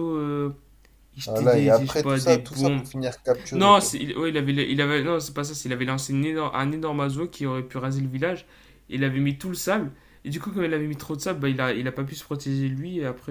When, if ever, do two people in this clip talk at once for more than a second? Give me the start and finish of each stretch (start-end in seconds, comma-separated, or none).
1.2-2.9